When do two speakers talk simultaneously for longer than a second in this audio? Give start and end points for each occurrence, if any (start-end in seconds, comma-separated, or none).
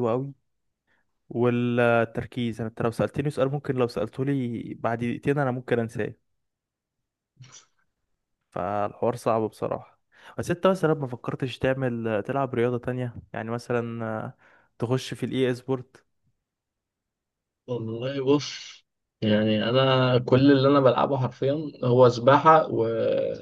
none